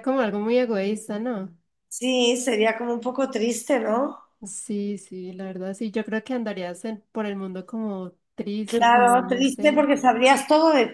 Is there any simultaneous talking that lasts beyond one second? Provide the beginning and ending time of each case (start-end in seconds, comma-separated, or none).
8.7-9.9